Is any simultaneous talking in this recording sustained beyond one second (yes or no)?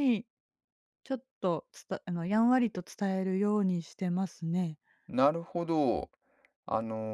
no